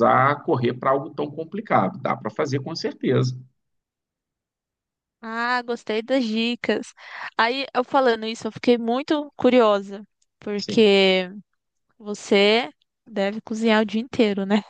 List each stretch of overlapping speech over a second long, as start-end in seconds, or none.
none